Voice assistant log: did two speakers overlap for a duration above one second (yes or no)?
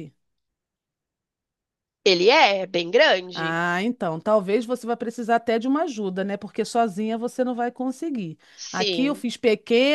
no